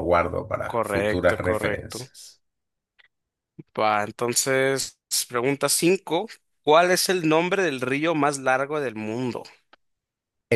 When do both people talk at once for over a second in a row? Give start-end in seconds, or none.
0.7-2.0